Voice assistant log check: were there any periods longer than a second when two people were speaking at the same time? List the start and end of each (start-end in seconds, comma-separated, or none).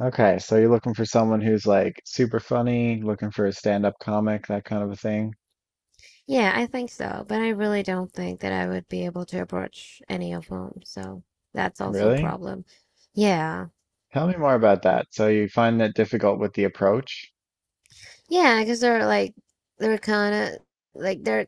none